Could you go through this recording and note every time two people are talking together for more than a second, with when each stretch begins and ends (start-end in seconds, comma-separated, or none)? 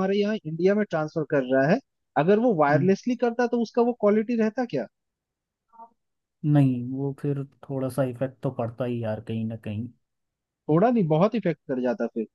none